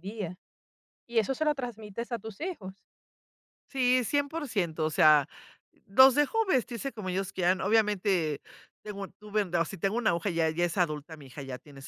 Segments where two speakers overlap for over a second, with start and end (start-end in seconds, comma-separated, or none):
none